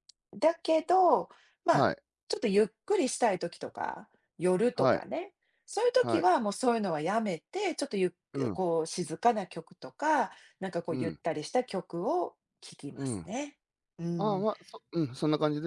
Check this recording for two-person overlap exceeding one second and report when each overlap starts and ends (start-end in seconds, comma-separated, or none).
none